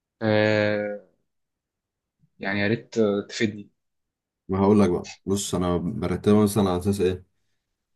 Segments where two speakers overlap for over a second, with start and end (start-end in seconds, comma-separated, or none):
none